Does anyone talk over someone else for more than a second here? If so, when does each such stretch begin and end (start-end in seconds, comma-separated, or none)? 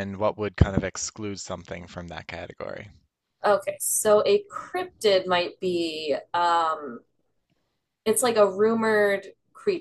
none